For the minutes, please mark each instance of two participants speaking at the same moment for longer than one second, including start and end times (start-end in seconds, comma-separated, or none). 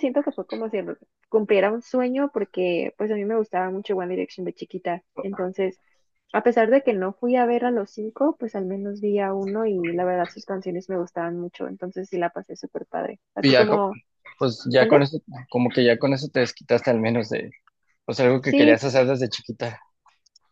none